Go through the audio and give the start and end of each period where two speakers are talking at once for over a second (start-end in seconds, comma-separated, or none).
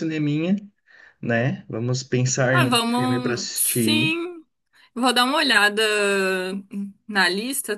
2.5-4.1